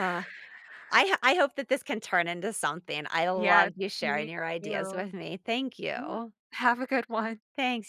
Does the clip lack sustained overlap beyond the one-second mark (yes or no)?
no